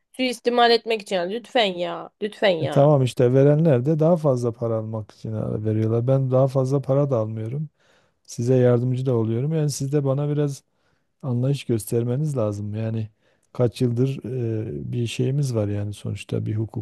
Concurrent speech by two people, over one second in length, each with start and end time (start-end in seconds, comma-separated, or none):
none